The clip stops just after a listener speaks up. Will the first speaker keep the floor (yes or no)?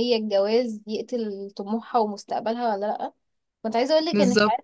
yes